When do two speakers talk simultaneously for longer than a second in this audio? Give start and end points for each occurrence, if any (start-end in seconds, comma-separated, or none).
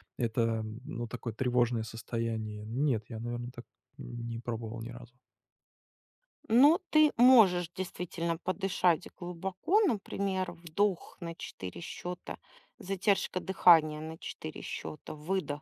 none